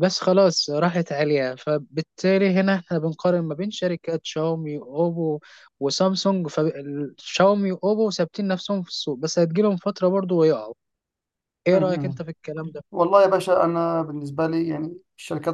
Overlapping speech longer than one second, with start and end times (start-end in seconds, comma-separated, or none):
none